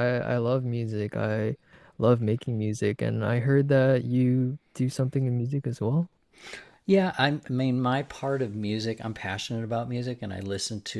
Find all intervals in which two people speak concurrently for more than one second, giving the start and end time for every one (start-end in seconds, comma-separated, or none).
none